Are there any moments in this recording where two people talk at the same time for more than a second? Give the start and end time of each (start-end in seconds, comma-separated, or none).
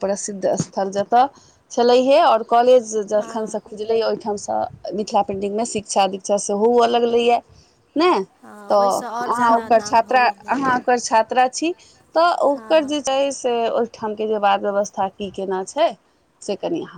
8.4-10.5